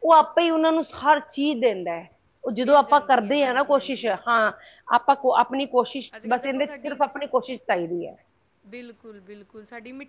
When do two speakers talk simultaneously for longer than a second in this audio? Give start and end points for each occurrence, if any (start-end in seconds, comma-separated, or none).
2.6-4.1